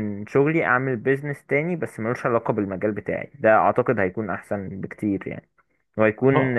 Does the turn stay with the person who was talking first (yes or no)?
yes